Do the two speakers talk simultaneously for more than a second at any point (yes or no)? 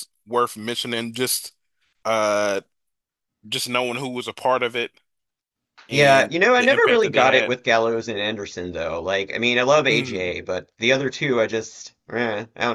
yes